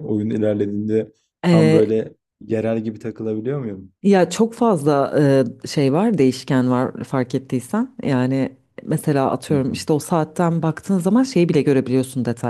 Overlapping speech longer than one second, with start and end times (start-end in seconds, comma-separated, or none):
none